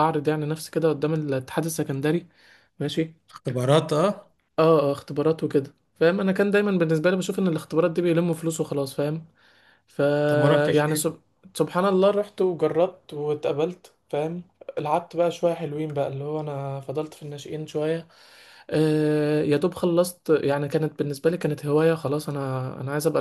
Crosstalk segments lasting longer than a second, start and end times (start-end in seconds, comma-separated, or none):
none